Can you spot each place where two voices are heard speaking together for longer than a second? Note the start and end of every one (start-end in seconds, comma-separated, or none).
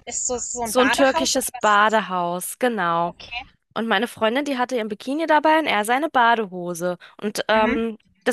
0.6-2.0